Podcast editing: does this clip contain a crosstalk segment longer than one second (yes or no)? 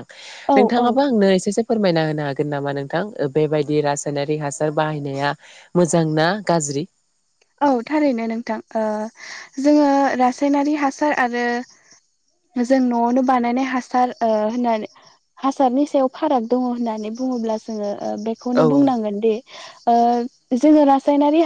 no